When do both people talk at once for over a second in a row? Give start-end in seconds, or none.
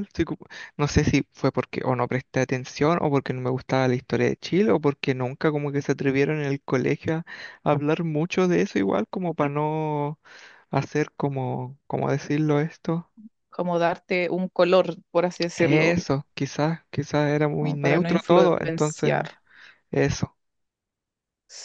17.5-19.1